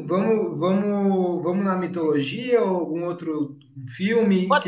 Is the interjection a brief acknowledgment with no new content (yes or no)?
no